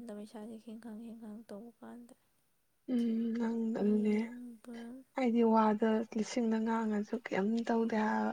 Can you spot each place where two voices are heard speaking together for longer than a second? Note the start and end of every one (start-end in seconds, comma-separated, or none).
none